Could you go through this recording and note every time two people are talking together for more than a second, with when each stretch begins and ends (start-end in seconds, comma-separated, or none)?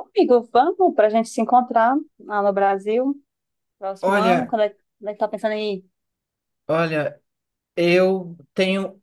none